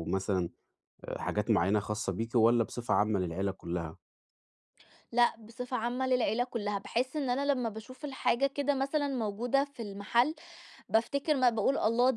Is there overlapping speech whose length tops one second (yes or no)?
no